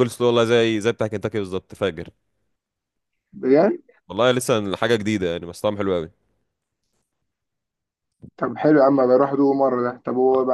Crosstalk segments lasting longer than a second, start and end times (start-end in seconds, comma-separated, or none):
none